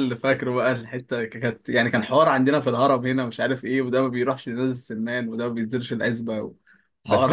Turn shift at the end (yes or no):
yes